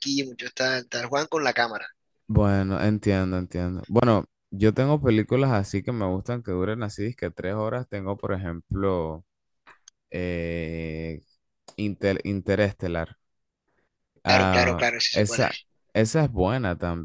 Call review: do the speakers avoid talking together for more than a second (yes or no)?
no